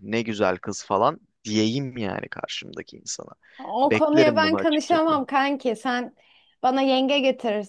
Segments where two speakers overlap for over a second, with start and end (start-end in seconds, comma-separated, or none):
3.8-5.1